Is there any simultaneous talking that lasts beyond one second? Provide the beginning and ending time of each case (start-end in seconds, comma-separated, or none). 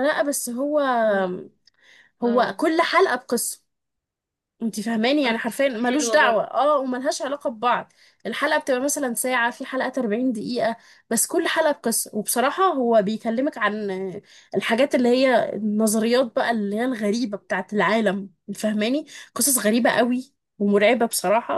5.2-6.5